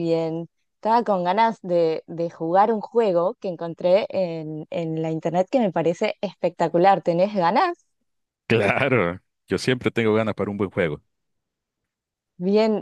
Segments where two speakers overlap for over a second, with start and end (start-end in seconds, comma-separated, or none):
none